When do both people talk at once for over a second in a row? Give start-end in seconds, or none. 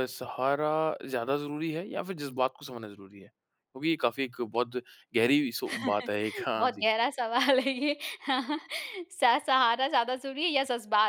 none